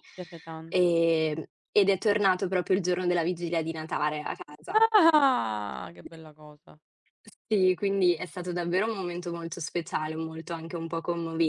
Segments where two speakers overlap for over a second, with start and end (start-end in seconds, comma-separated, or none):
none